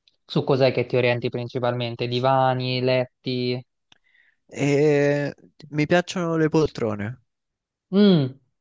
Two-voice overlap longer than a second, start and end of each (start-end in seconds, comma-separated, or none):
none